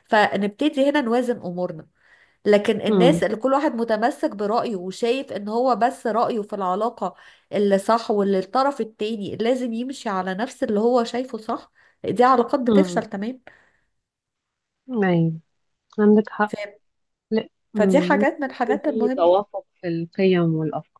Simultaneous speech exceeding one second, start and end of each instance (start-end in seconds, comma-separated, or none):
17.8-19.3